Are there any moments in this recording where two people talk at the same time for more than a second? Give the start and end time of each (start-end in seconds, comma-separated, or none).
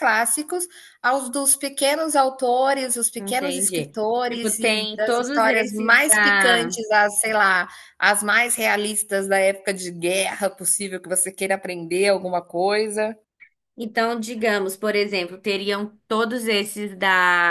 3.2-6.8